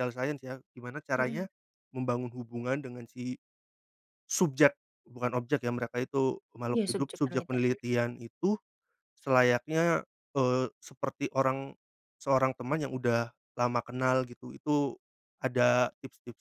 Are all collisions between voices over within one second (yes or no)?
no